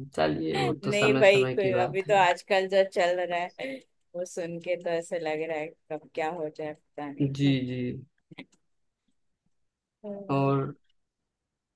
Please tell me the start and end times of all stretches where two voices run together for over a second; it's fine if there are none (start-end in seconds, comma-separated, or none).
0.6-2.2